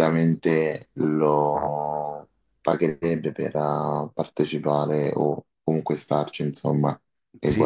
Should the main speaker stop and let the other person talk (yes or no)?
yes